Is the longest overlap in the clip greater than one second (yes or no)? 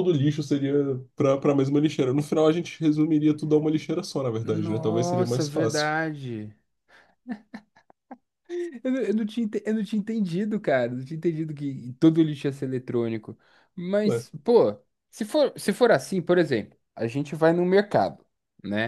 yes